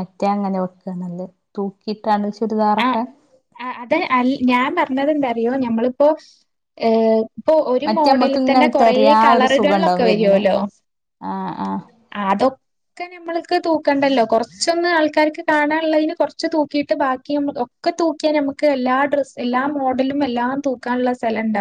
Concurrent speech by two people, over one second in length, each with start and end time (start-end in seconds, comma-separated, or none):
7.9-10.4